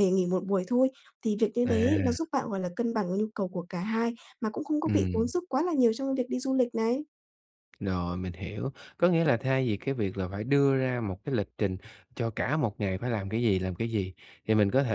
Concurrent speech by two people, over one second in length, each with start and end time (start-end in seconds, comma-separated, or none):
none